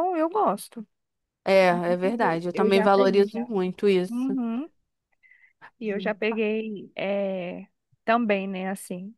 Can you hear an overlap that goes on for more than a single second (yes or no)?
yes